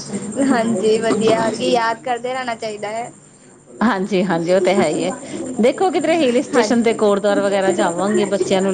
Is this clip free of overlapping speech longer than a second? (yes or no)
yes